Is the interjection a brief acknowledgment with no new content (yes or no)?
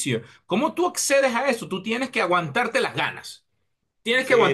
yes